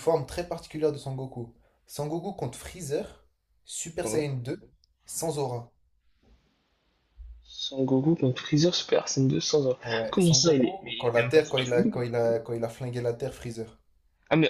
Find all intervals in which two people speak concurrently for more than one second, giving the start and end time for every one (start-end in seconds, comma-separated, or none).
9.8-12.1